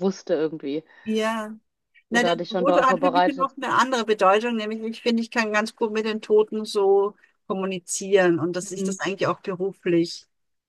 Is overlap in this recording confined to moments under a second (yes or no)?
no